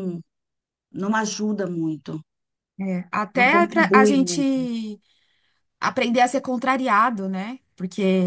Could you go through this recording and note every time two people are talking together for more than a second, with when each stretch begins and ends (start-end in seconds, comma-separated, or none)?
3.3-4.6